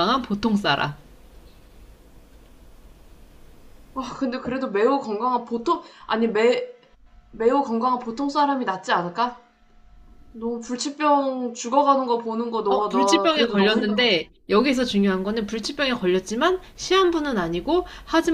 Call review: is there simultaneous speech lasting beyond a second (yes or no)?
yes